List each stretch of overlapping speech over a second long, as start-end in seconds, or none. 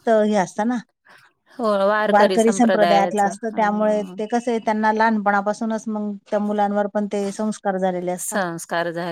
2.4-3.6